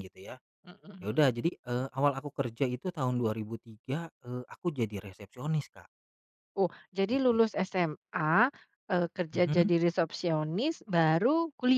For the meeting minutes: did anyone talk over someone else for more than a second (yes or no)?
no